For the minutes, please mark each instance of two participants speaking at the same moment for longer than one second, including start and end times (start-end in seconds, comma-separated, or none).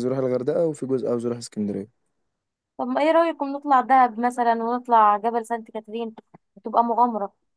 none